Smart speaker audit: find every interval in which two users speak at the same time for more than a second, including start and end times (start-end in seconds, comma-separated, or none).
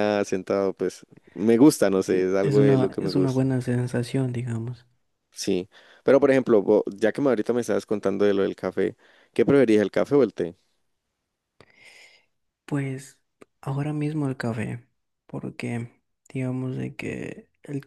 2.1-3.4